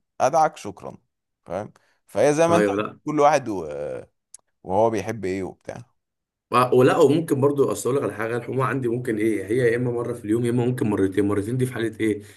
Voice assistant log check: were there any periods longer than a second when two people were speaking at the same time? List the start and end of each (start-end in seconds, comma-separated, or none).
none